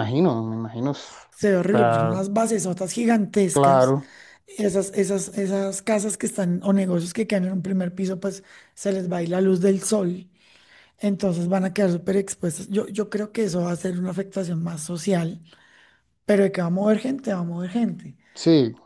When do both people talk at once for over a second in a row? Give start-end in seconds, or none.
none